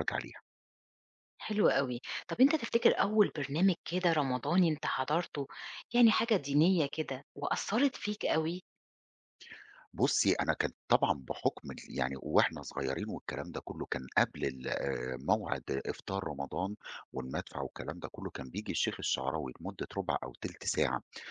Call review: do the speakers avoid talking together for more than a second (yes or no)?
yes